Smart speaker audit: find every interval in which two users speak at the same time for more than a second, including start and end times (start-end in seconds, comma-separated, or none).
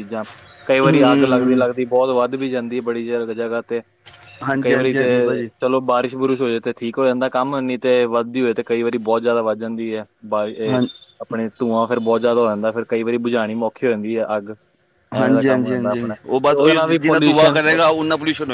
15.2-17.6